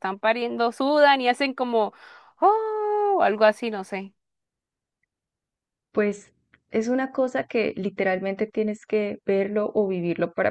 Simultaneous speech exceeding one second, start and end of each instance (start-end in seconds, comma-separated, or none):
none